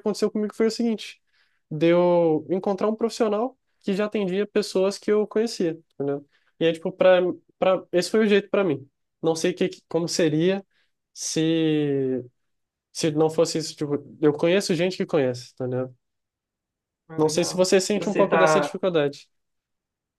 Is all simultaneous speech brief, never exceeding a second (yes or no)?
no